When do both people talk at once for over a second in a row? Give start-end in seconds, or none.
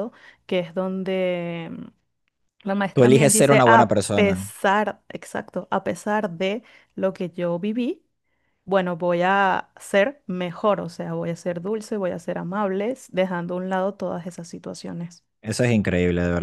2.9-4.4